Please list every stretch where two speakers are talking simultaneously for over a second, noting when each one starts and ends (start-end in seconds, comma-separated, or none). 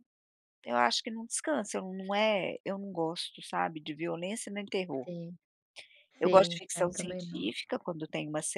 6.2-7.5